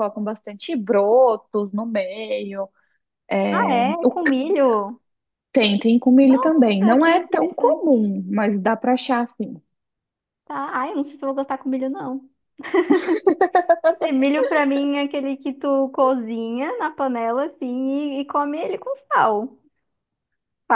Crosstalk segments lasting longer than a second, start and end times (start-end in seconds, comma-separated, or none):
6.2-8.0